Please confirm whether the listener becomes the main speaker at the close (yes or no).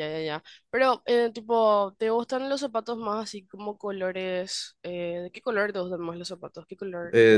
yes